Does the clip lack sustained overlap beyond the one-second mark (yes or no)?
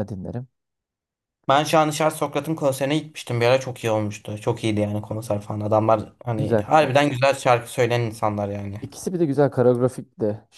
yes